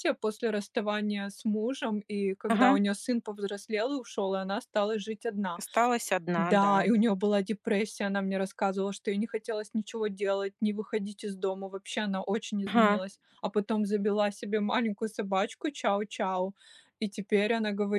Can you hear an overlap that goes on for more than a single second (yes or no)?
no